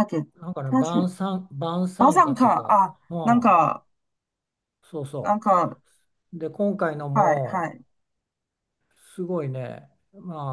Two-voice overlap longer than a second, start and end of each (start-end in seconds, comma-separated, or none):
2.0-3.6